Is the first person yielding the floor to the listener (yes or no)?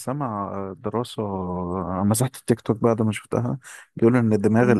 no